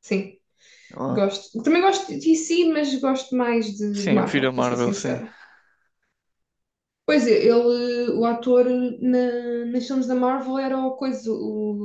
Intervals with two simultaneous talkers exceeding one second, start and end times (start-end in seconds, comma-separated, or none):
3.9-5.2